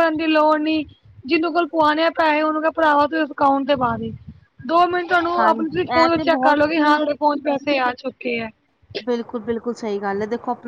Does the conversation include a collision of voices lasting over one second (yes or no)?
yes